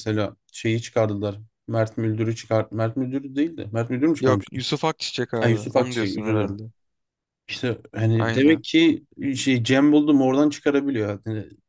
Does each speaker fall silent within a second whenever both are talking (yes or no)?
no